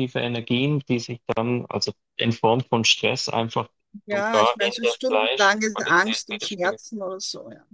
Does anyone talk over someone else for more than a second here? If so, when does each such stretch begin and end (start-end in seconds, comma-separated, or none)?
4.1-6.8